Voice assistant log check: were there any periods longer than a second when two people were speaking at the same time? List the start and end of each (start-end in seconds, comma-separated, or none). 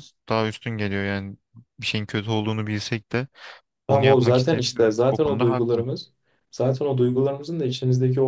3.9-5.8